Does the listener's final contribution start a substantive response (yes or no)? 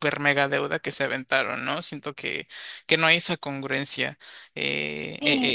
yes